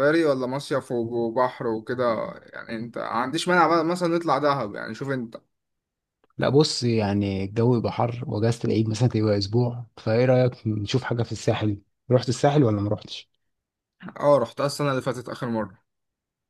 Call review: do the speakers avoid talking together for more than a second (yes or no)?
yes